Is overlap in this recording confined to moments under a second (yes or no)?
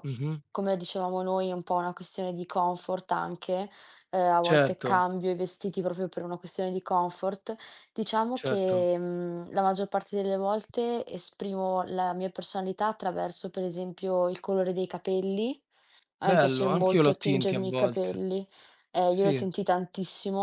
no